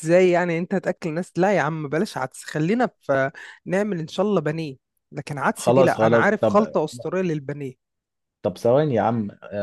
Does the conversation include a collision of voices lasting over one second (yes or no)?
yes